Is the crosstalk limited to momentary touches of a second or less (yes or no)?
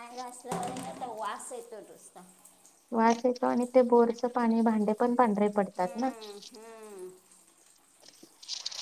yes